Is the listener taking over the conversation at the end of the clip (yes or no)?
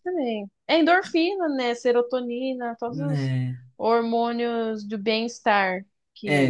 yes